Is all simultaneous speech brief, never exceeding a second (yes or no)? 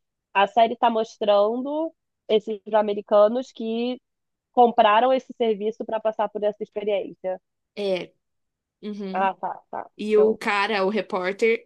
yes